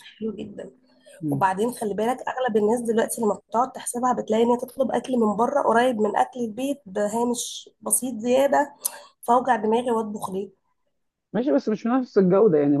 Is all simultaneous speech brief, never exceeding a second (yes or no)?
yes